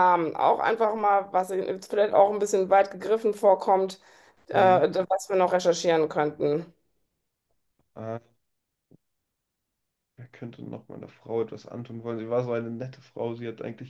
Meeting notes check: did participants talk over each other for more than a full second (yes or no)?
no